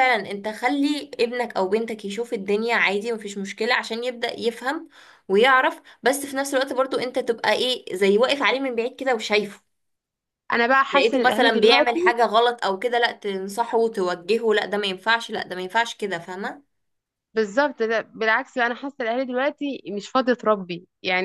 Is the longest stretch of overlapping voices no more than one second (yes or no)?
no